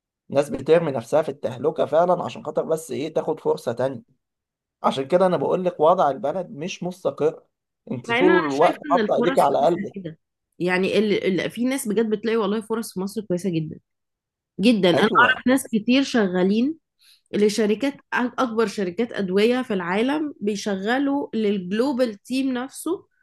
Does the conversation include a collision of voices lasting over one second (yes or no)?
yes